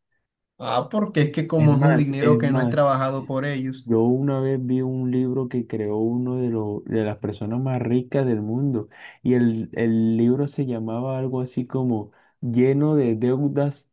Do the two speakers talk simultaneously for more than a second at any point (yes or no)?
yes